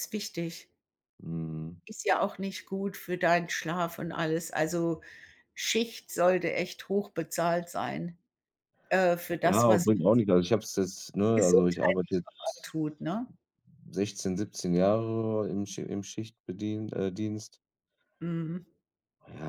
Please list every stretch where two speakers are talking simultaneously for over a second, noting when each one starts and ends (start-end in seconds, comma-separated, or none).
11.3-12.7